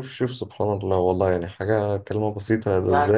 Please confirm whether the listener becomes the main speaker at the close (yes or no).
no